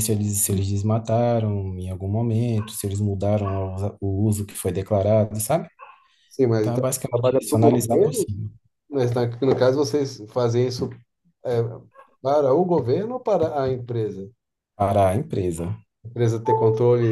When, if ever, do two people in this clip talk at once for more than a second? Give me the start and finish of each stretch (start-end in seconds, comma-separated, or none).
6.6-8.3